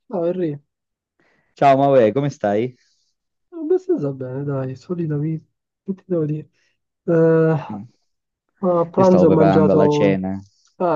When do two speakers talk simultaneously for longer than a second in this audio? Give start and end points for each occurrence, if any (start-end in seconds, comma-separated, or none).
9.0-10.2